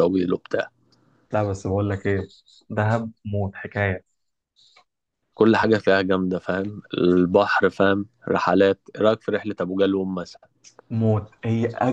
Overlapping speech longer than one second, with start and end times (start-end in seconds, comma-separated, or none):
none